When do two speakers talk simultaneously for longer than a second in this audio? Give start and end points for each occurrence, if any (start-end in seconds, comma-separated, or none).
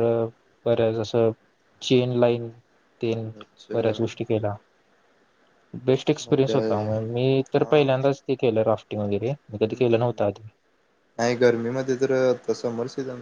none